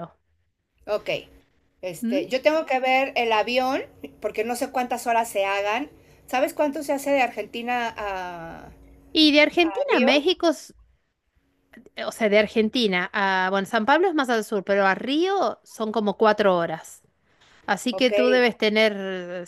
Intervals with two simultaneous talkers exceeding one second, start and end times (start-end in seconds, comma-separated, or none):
none